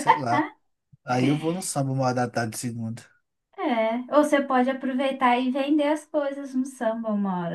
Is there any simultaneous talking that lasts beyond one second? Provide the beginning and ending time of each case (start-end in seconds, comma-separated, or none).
none